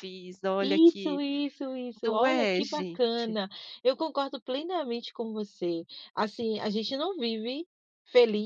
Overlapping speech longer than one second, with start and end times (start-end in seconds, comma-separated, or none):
2.0-3.4